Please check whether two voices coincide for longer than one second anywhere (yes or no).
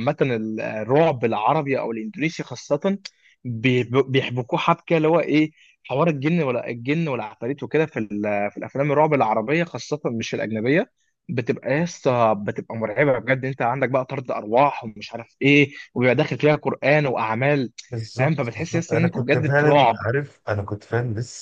yes